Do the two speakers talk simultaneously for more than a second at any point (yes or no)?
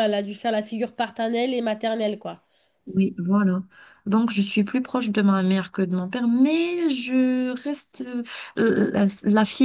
no